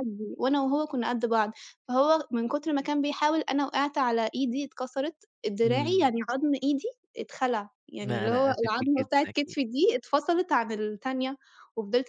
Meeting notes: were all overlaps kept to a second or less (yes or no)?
no